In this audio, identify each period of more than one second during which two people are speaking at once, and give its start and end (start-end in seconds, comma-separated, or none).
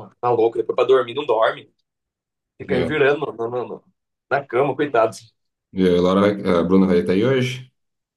none